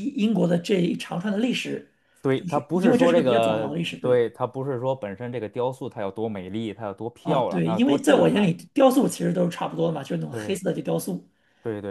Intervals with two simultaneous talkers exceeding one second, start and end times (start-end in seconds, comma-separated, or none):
2.3-4.2, 7.2-8.5